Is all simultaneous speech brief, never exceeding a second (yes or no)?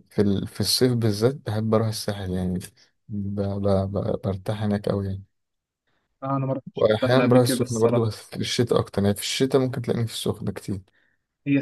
no